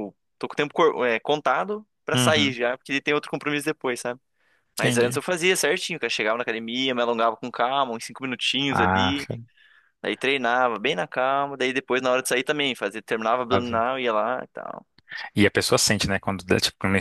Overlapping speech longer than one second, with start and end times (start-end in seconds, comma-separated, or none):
none